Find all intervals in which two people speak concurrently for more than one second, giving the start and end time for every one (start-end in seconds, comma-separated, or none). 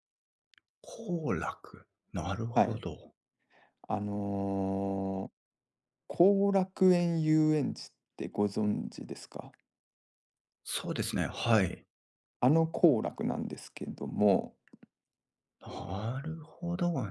none